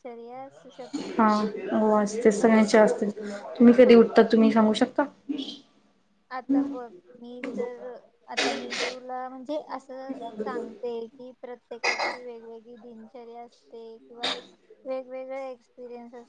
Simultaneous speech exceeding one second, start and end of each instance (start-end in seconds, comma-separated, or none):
none